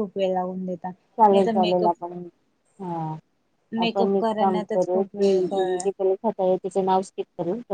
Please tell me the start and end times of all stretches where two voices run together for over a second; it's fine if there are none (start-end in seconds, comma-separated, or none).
3.9-5.8